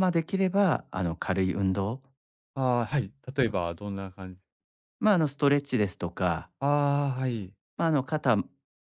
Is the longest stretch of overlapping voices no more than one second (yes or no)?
yes